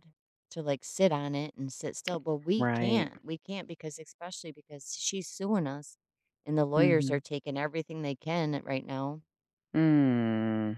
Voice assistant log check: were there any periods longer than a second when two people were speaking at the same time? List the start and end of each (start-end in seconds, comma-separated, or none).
none